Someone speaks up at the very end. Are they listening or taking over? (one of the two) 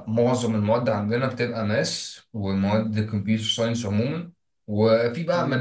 listening